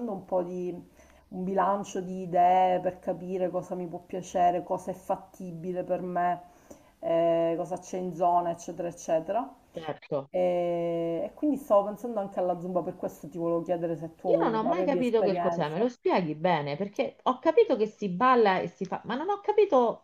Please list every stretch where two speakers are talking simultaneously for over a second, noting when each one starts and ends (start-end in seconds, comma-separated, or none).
14.2-15.9